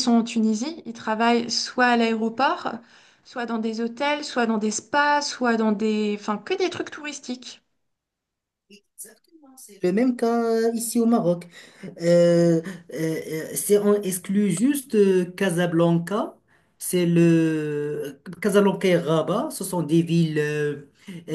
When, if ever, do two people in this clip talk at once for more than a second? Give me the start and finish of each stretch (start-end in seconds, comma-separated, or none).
none